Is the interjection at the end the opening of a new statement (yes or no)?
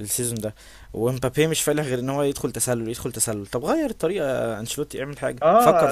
yes